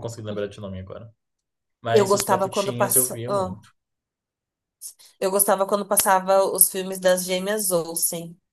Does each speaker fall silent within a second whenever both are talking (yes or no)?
no